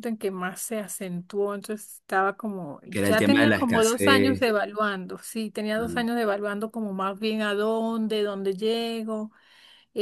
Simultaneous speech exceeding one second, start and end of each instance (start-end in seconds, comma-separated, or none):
2.9-4.5